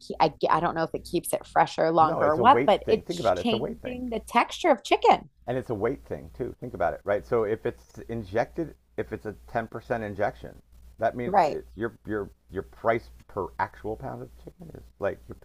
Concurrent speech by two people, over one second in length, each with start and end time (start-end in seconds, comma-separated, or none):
2.0-4.0